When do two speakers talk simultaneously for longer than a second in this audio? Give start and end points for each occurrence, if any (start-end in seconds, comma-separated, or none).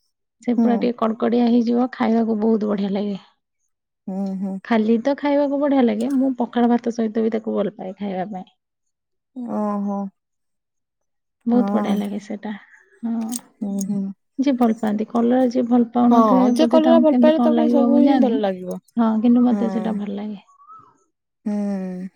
16.1-18.4